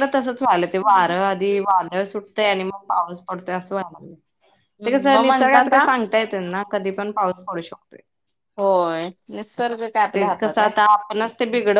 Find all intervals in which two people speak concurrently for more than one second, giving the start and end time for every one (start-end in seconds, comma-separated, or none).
none